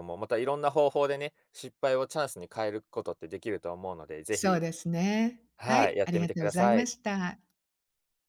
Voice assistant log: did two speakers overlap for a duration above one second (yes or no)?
yes